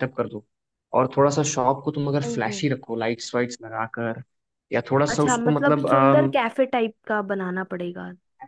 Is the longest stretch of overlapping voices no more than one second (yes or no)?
no